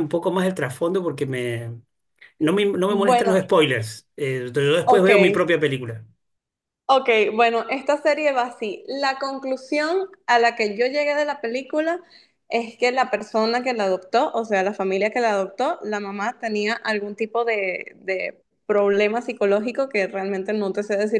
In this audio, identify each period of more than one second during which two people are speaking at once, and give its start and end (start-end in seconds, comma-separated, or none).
none